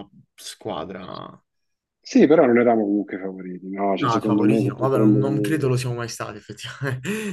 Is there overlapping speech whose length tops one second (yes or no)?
yes